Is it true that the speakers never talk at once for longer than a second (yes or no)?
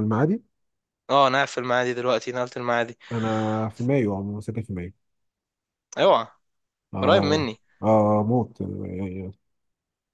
yes